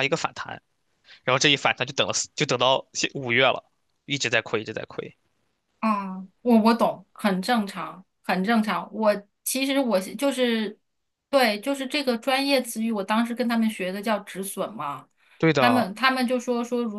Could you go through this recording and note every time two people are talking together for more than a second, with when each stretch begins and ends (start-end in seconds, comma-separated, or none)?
none